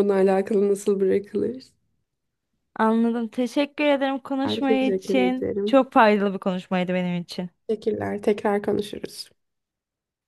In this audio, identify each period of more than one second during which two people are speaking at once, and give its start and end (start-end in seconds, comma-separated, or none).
4.5-5.8